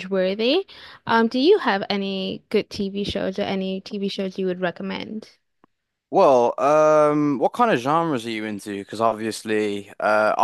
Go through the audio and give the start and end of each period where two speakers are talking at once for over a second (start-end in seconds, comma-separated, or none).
none